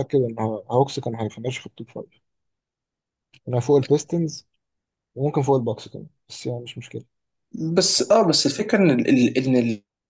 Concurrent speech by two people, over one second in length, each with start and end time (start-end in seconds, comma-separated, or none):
none